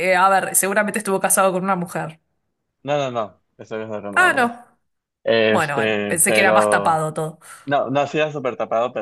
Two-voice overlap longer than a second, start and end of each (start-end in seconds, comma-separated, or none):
5.5-7.1